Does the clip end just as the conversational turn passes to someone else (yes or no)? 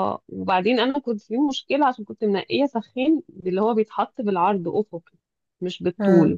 no